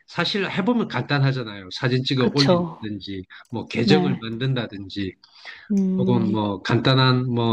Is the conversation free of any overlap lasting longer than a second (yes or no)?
yes